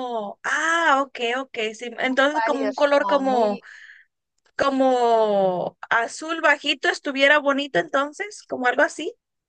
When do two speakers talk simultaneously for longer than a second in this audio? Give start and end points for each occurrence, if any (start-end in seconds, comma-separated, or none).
2.0-3.6